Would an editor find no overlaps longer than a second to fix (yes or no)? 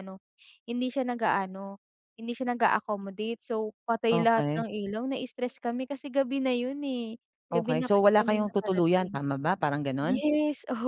no